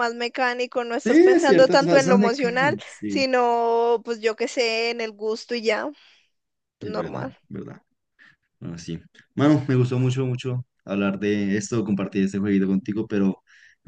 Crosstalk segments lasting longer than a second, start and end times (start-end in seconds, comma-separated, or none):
1.1-3.2